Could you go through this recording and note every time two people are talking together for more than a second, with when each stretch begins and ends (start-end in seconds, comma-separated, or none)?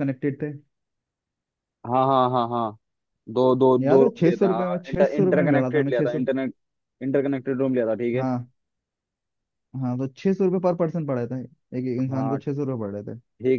3.8-6.3